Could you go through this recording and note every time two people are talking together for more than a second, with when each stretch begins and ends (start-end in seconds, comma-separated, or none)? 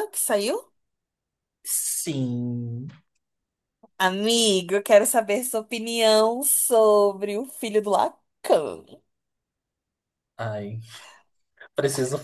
none